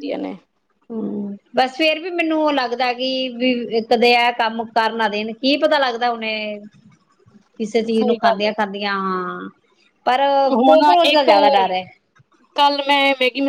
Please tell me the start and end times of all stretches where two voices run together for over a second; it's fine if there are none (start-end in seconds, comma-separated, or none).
none